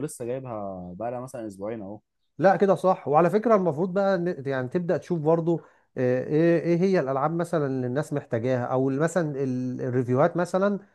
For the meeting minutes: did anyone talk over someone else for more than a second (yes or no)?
no